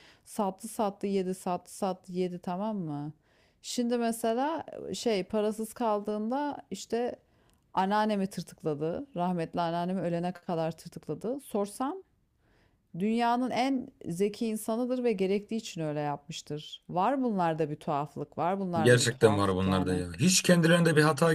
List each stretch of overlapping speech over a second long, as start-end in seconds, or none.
18.8-20.0